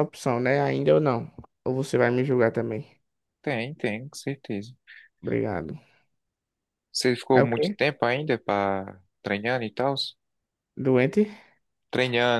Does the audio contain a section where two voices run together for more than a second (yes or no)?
no